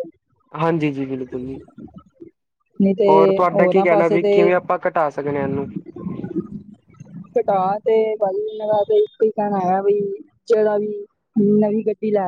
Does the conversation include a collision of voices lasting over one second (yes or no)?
yes